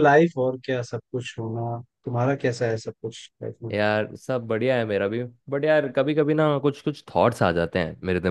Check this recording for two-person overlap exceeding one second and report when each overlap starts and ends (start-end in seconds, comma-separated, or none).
none